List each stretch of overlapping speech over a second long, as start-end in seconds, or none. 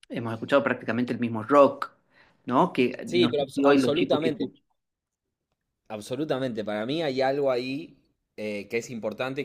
3.1-4.5